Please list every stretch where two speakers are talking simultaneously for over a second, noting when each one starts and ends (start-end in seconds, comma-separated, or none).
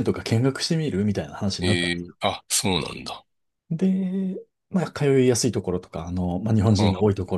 none